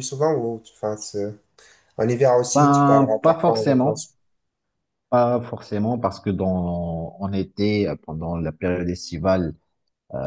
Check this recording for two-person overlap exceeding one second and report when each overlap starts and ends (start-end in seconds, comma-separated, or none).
2.5-4.0